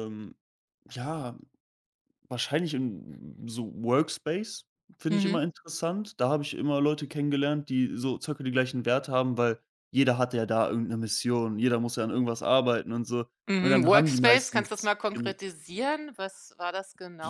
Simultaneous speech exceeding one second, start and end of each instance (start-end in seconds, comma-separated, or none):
13.5-15.3